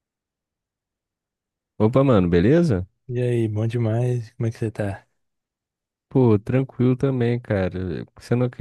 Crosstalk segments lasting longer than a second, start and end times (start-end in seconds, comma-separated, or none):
none